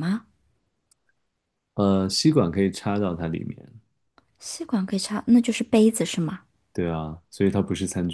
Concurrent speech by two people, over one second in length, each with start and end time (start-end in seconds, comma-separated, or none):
none